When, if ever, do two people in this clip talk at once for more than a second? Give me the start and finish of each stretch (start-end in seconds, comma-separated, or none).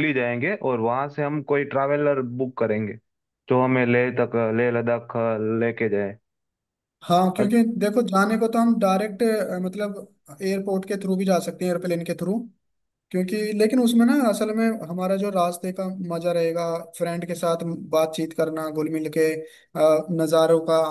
none